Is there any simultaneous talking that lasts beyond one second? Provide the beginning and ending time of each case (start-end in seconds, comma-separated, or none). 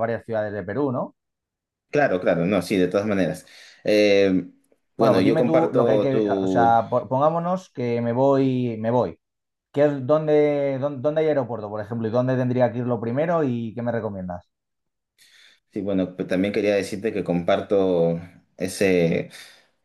5.0-6.8